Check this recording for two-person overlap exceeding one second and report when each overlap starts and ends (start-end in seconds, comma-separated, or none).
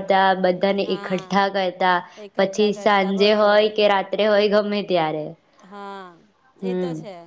2.4-3.7